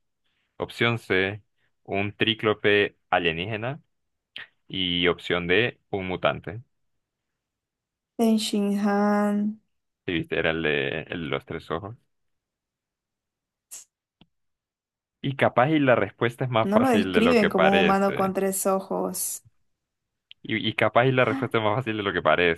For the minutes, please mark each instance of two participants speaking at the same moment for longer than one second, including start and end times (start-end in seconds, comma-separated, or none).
16.6-18.3